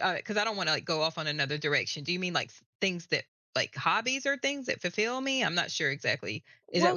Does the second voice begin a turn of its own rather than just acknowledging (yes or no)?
yes